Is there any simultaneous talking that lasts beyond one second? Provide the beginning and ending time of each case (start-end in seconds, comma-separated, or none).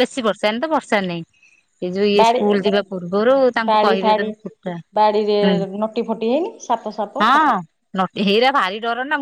none